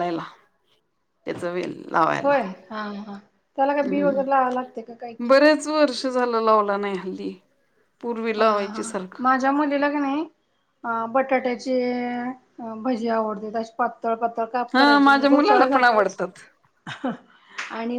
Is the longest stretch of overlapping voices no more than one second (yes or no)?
no